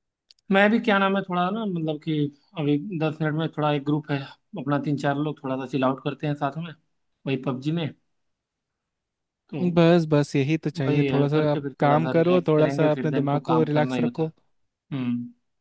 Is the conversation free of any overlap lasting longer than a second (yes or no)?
no